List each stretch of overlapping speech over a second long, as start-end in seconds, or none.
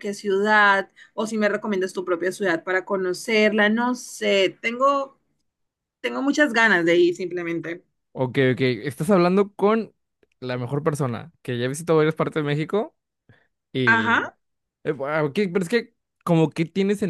none